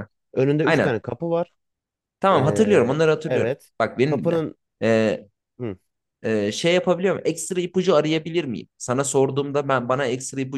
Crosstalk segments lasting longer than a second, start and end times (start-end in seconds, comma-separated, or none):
2.3-4.4